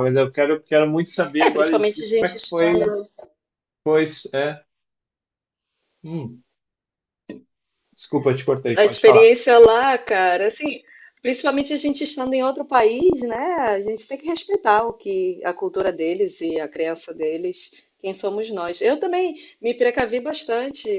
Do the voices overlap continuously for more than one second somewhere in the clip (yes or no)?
yes